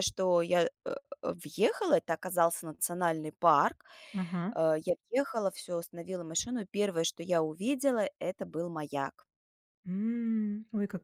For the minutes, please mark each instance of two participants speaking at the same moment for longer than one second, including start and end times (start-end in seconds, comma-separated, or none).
none